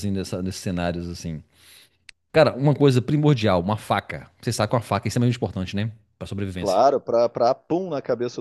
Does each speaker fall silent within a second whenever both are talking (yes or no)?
yes